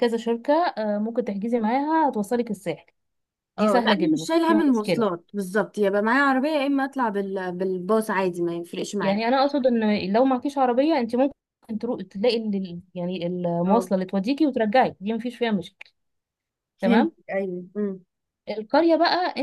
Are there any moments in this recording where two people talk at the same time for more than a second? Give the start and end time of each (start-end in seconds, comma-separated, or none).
3.6-5.0